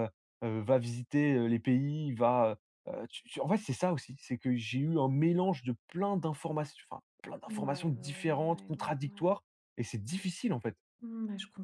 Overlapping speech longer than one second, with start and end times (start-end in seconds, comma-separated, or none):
7.5-9.2